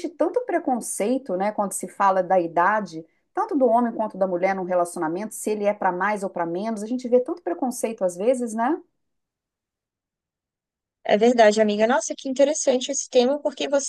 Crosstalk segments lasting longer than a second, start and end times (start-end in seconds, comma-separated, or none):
none